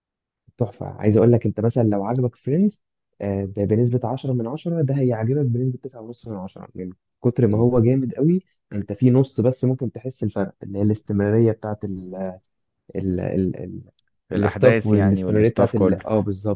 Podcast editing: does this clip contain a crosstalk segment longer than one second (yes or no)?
yes